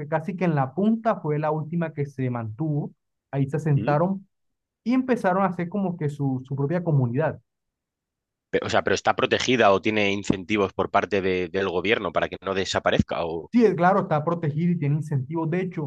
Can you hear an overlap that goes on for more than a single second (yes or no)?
no